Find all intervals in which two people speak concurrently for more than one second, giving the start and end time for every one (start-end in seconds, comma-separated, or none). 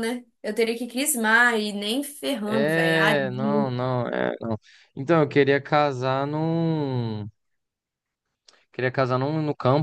2.4-3.8